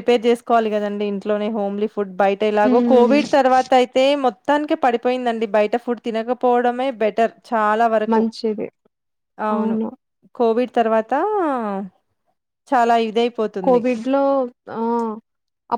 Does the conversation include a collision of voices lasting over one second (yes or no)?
no